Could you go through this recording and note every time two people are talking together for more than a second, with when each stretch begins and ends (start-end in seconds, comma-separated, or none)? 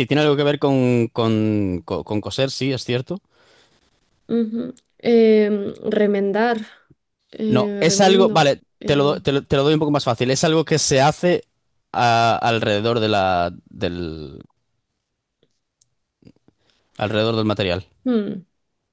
7.5-9.2